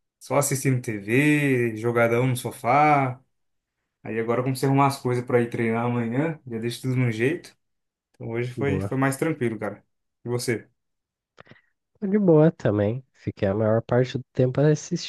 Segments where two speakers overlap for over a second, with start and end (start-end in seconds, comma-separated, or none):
none